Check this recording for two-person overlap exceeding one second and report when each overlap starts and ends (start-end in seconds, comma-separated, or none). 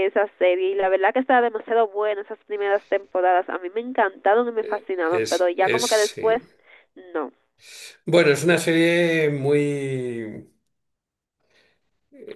5.1-6.4